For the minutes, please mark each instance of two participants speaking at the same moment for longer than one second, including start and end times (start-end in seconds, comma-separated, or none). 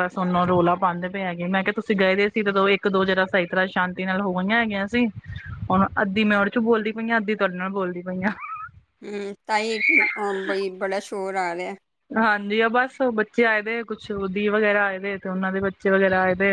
none